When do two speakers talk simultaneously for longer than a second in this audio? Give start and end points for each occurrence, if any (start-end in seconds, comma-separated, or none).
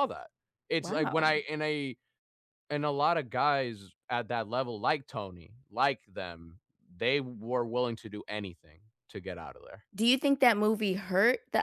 none